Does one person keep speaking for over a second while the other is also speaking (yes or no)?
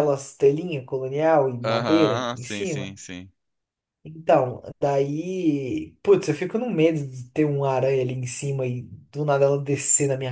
yes